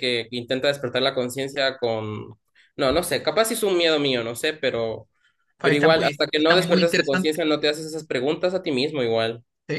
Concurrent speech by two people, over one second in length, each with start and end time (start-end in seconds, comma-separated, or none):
5.6-7.3